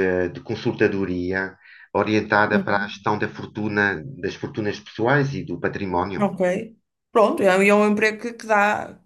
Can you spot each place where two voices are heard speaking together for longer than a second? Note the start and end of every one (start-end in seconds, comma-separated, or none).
none